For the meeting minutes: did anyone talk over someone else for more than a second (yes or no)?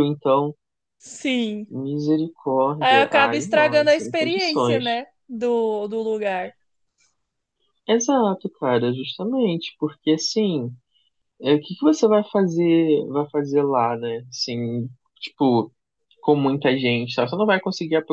yes